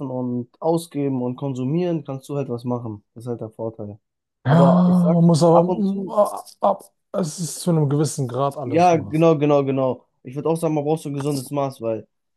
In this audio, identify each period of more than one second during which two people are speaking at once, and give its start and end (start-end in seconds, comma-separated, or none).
4.5-6.2